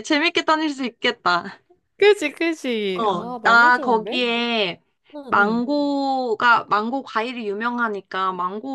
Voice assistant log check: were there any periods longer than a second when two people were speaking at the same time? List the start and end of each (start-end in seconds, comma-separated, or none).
2.9-4.2